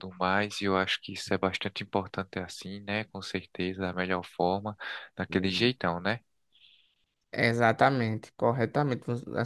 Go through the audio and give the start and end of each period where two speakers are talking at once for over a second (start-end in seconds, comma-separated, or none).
none